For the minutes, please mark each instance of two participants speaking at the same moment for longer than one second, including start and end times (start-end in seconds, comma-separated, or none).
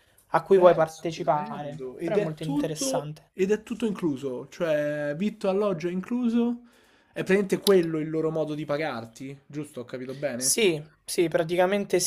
0.5-3.3